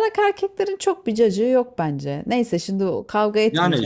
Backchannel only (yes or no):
no